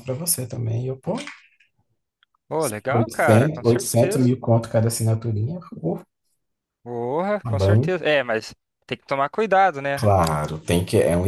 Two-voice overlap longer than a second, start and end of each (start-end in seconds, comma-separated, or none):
3.0-4.3